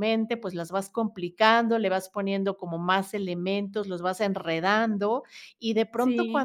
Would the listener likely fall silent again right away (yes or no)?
yes